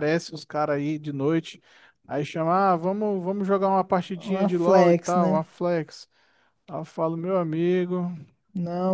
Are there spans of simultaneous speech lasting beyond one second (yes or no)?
yes